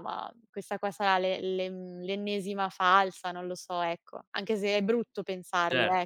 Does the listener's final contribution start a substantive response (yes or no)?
yes